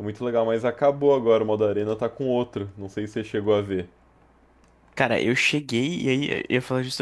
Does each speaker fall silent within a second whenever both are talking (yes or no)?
yes